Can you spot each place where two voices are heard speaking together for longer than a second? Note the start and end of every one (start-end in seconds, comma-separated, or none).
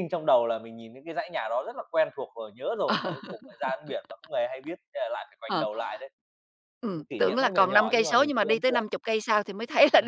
6.9-8.9